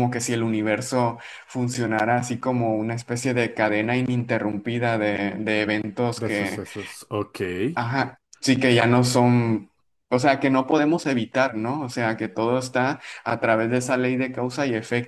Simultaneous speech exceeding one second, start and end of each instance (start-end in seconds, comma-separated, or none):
none